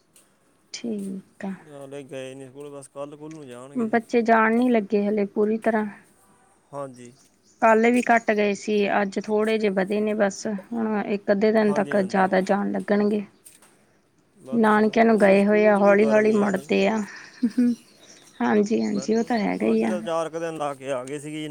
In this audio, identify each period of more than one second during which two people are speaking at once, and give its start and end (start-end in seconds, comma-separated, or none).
14.6-16.7